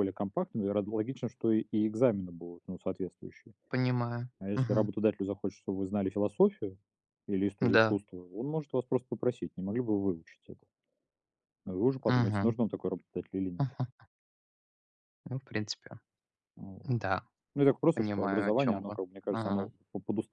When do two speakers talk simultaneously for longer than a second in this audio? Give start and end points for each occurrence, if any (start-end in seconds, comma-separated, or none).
17.9-19.7